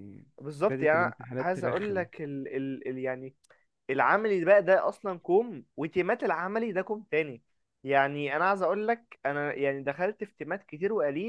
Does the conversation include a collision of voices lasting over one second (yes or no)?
yes